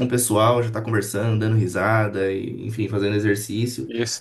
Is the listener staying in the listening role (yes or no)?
no